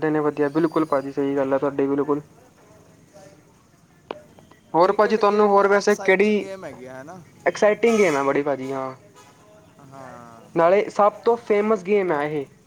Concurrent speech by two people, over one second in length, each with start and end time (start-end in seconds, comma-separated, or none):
4.8-6.5